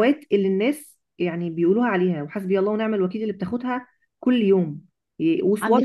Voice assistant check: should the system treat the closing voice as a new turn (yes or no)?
no